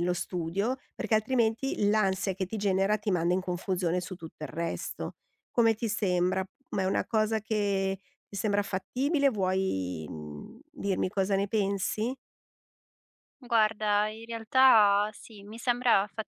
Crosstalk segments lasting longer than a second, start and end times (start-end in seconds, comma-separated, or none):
none